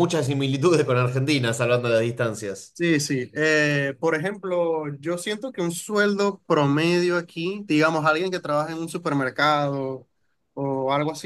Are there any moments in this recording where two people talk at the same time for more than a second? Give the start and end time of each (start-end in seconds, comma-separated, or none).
none